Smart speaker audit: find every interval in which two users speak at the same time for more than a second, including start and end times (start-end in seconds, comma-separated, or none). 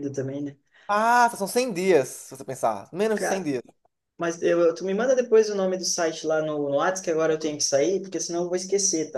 none